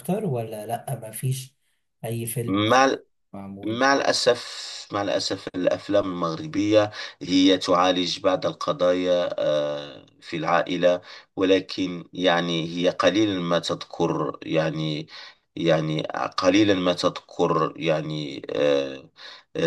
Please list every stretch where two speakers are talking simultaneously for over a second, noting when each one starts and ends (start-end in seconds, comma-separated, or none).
none